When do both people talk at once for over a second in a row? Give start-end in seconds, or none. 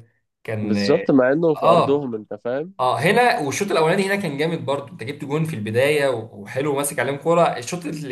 none